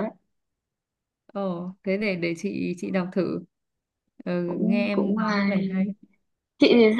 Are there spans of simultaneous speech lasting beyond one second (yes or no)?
yes